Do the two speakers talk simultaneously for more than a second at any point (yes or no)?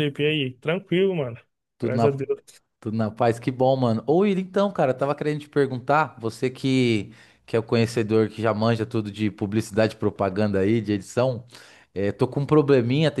no